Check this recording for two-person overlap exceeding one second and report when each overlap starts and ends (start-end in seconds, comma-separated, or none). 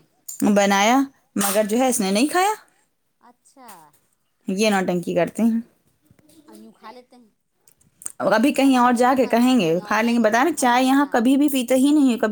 8.6-11.1